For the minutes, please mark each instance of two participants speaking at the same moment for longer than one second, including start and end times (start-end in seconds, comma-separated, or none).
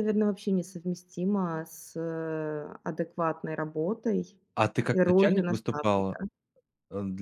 4.9-6.2